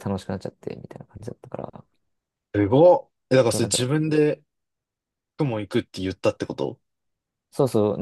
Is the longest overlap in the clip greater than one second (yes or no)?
no